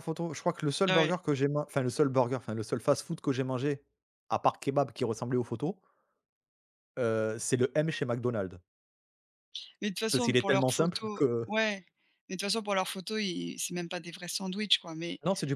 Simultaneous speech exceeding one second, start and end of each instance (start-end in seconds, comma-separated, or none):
10.1-11.5